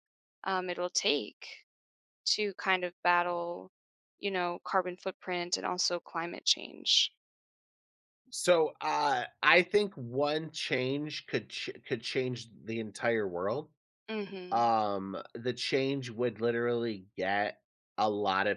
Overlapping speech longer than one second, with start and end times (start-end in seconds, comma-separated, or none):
none